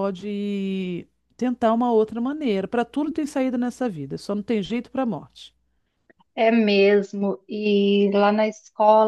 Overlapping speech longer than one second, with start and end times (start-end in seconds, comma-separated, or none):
none